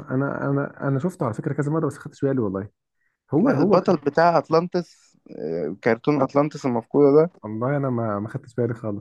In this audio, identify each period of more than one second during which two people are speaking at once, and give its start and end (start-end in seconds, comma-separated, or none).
none